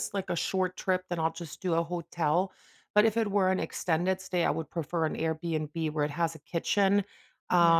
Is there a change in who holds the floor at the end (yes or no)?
no